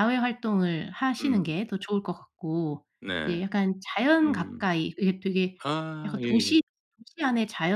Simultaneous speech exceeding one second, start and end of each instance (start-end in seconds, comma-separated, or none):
none